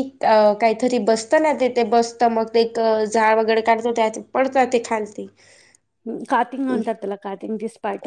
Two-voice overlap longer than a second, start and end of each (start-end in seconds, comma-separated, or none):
none